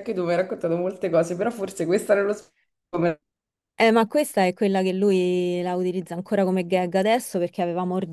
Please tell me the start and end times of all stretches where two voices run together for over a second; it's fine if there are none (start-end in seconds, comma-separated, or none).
none